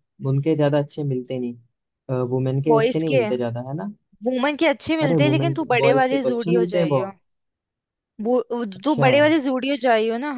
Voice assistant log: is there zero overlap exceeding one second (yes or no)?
no